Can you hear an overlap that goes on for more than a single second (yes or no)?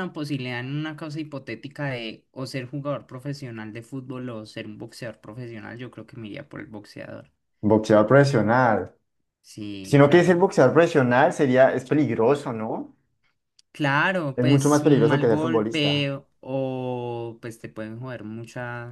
yes